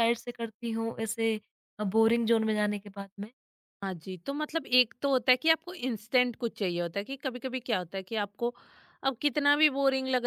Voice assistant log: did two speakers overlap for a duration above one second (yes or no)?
no